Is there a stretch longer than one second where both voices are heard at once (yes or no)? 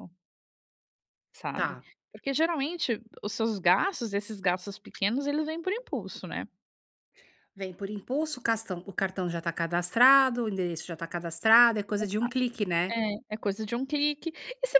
no